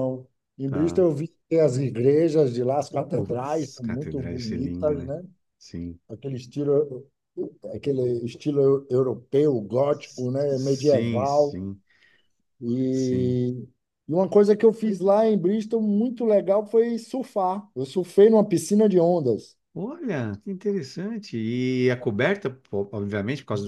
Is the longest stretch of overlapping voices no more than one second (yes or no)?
no